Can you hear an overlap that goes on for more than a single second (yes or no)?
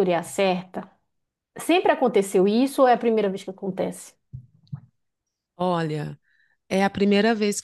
no